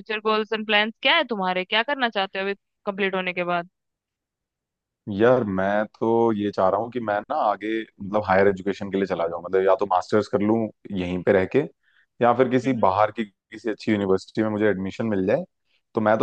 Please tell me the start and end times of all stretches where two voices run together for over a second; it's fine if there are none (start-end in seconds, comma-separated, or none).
none